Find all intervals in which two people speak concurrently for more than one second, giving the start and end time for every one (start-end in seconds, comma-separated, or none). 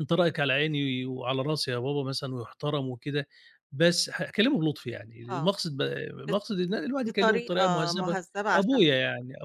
7.0-8.8